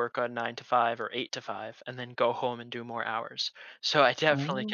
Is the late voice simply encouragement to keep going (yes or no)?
yes